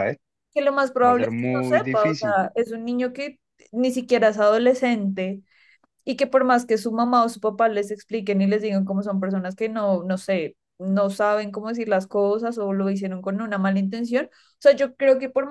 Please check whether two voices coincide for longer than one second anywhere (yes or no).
yes